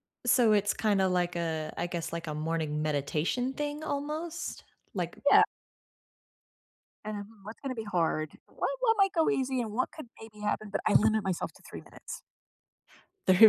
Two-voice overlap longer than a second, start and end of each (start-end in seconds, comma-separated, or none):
none